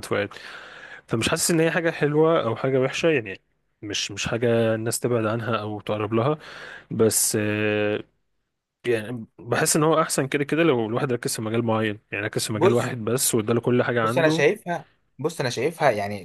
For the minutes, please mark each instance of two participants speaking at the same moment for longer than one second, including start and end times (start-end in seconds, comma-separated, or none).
none